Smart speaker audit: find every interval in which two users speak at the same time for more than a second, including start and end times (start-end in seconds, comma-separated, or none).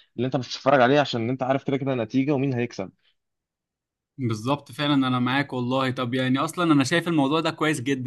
none